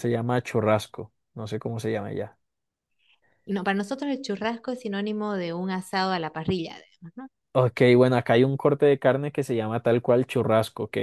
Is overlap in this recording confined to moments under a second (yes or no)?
yes